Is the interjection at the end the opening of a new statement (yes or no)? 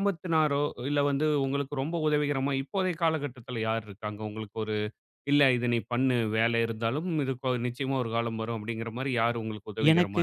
yes